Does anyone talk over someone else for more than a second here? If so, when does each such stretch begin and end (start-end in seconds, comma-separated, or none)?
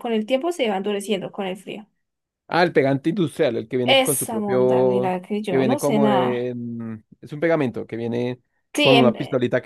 3.8-6.5